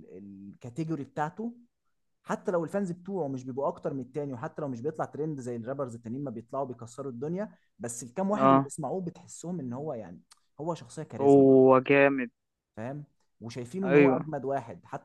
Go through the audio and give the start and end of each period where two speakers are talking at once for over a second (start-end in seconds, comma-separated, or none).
none